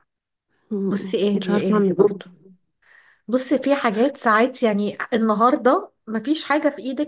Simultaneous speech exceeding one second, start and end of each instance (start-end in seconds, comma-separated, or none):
0.9-2.2